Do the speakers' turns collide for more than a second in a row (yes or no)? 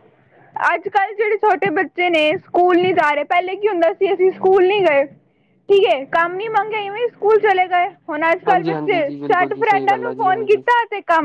yes